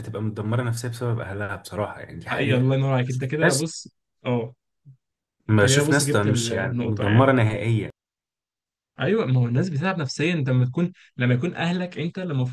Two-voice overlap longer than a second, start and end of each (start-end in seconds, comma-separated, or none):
5.5-7.3